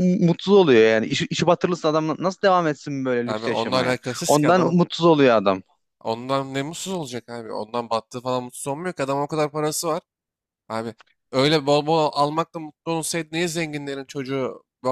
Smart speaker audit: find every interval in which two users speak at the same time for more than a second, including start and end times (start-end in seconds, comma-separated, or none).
3.2-4.8